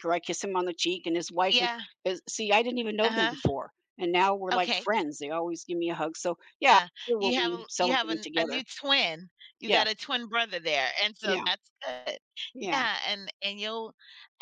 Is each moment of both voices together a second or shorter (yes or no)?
no